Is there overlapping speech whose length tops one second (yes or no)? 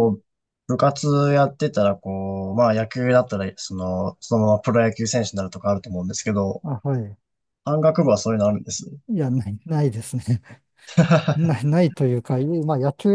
no